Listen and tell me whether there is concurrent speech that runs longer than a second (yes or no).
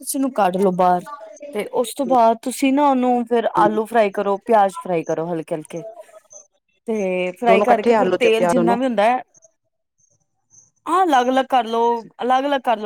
yes